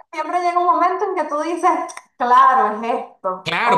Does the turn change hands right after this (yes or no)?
yes